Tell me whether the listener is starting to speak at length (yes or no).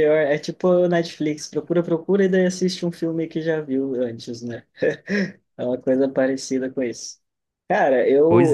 no